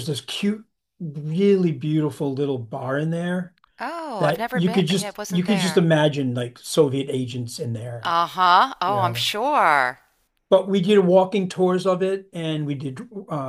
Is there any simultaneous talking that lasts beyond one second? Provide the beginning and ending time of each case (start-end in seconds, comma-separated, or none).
4.2-5.9